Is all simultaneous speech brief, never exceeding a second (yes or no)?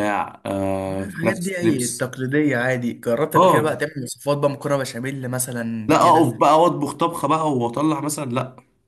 no